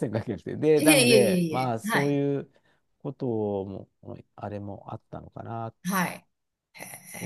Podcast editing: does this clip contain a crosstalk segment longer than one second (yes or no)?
yes